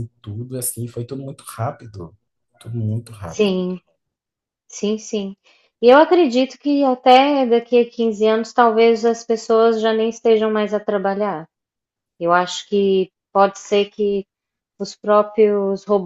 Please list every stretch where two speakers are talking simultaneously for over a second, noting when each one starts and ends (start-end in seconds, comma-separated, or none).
none